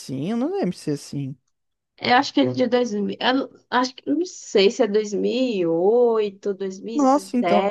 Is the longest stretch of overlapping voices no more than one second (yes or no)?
yes